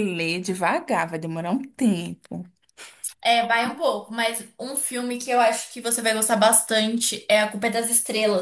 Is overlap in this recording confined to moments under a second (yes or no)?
yes